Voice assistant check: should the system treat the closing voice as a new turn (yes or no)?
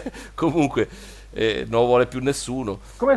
yes